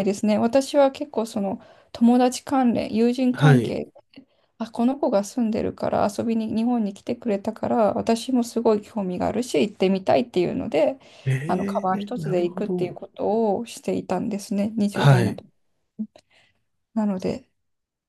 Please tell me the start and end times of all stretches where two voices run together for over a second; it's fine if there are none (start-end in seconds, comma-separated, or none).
11.5-13.0